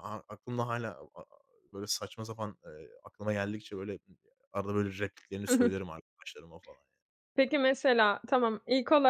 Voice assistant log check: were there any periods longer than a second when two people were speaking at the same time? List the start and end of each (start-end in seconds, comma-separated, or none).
none